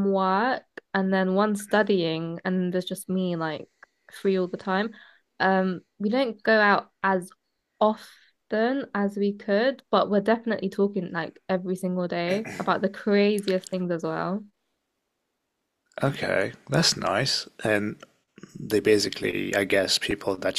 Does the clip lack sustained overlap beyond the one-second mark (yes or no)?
yes